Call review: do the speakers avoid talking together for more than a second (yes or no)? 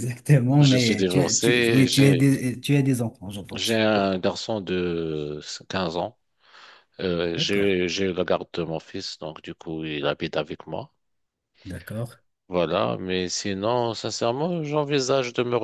no